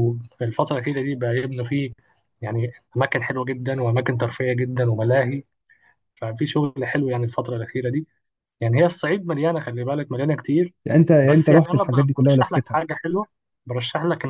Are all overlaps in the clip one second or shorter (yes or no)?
no